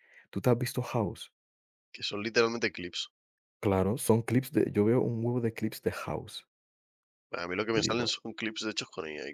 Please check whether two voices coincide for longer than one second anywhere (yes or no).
no